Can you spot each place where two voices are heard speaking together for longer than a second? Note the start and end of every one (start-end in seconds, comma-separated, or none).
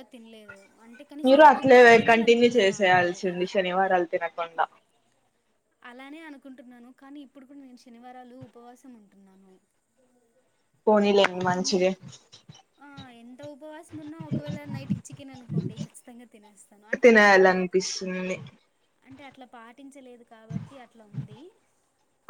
1.2-3.1